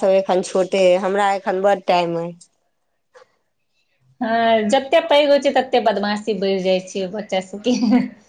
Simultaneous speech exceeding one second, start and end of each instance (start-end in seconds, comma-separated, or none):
none